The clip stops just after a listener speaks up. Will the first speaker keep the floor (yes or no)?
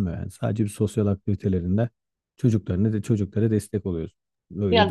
no